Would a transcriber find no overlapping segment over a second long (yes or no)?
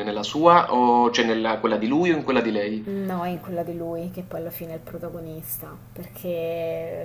yes